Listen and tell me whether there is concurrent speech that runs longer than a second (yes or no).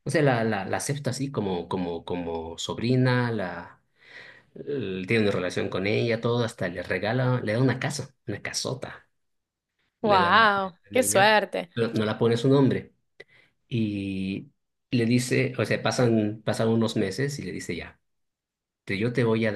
yes